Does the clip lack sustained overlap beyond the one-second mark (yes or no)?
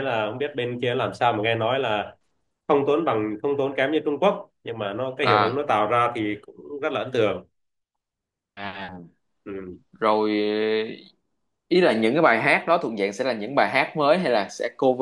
yes